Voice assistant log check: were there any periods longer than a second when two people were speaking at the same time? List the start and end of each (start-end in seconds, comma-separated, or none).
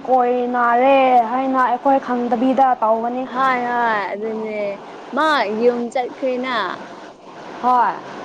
none